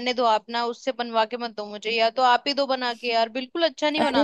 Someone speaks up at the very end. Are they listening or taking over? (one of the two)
taking over